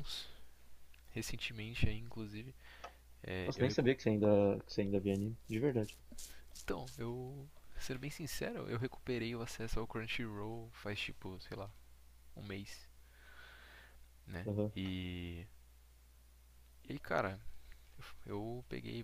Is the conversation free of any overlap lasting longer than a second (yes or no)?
yes